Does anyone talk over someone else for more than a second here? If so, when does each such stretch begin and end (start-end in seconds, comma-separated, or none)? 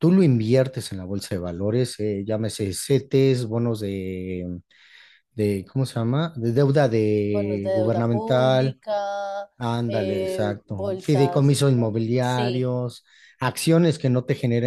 7.3-8.8, 9.9-11.5